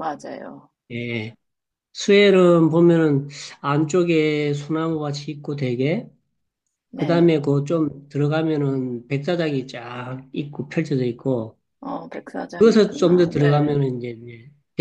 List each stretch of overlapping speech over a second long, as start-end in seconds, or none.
12.6-13.8